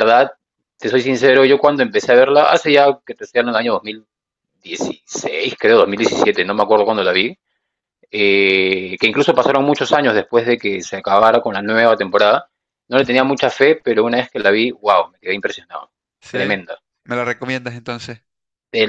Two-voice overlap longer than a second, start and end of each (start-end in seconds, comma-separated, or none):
none